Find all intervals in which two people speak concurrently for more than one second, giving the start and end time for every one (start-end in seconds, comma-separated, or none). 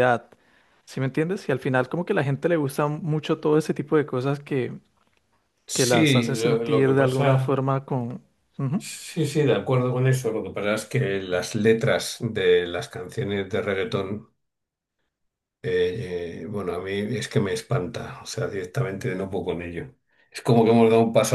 5.7-7.6